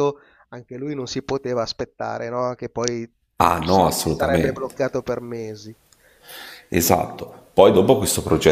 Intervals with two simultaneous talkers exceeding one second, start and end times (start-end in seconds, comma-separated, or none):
3.4-4.7